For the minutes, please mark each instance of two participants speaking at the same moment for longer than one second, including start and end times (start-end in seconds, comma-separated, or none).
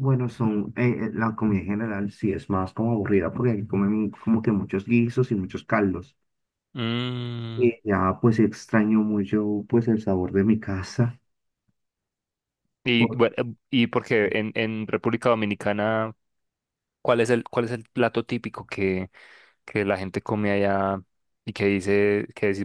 none